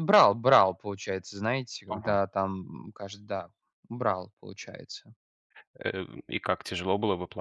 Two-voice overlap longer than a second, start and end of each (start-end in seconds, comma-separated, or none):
none